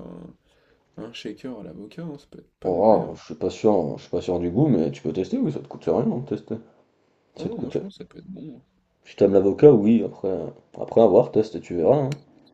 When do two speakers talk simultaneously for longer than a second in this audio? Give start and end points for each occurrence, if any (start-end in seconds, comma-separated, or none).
none